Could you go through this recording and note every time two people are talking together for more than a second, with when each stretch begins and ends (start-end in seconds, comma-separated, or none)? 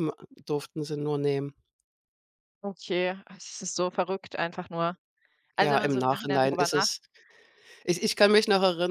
5.6-6.9